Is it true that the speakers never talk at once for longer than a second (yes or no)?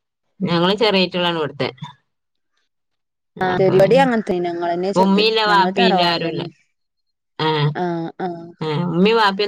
no